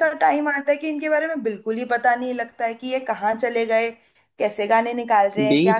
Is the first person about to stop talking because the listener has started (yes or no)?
yes